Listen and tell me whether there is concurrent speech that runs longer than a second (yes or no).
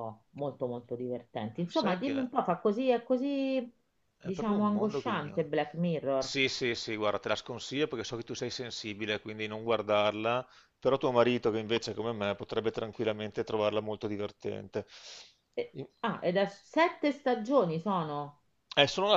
yes